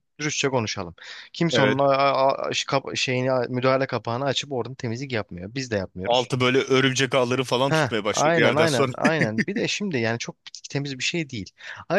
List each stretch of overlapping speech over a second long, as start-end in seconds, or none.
7.7-8.9